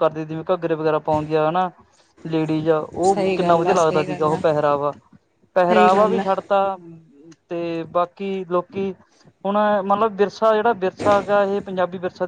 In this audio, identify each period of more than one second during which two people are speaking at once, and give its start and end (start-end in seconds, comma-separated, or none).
3.0-4.4